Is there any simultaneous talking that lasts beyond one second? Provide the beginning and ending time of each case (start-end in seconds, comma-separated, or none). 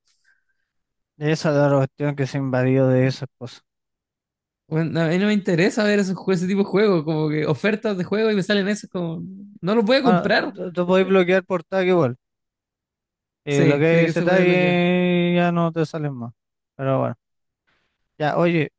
13.5-14.8